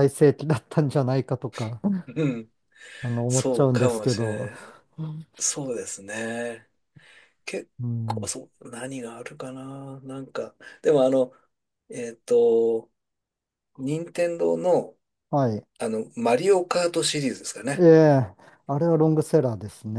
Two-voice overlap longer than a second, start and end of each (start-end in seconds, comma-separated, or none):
3.3-4.5